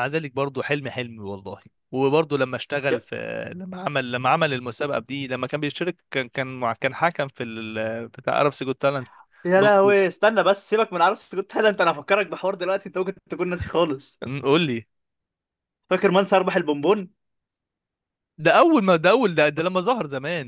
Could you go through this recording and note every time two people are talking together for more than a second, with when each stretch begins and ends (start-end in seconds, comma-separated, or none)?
none